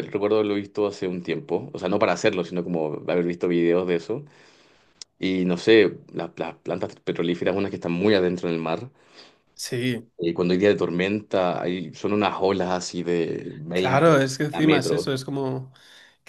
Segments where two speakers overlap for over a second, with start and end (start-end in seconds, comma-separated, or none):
13.7-15.1